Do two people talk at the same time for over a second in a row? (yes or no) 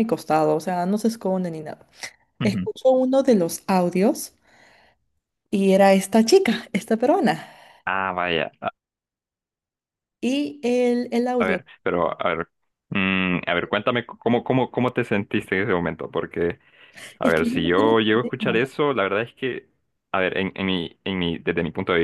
yes